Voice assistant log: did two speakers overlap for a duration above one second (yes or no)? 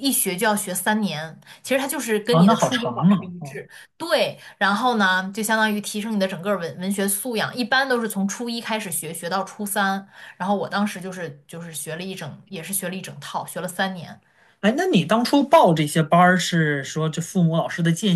yes